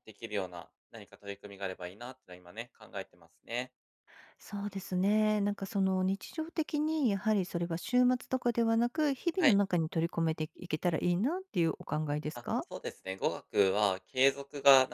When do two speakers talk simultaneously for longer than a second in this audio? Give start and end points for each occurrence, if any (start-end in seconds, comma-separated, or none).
none